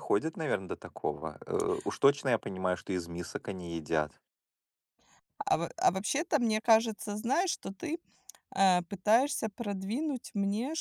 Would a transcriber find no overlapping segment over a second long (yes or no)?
yes